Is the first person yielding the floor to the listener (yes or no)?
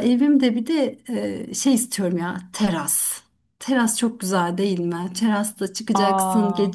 no